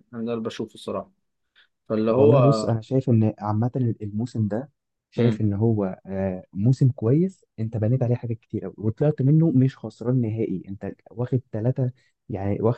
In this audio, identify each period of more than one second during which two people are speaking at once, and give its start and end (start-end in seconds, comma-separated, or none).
none